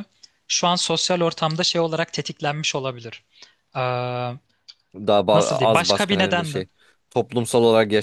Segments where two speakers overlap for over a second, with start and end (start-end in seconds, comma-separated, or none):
5.3-6.6